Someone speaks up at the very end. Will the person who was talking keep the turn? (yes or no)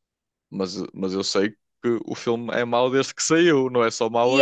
no